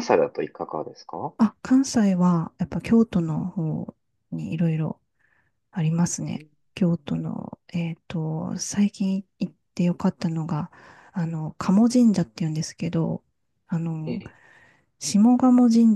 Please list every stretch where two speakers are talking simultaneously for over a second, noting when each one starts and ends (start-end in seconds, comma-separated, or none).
none